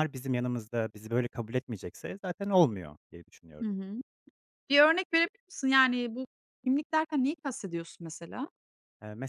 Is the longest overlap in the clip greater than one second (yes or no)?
no